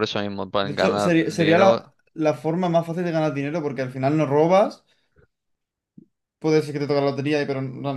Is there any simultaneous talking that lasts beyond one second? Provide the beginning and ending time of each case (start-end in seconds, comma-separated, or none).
0.6-1.9